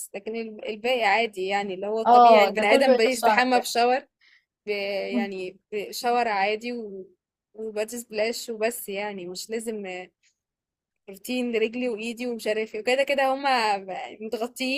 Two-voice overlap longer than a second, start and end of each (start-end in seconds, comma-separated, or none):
2.1-3.7